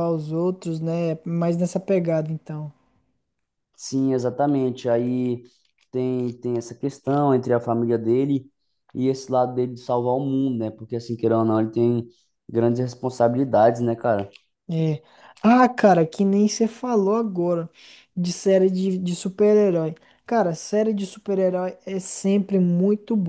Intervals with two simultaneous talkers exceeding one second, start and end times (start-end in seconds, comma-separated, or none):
none